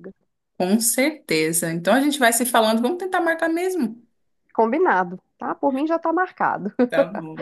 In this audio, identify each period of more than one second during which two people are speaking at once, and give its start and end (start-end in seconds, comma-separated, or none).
none